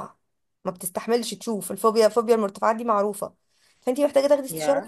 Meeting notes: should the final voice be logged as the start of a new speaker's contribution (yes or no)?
no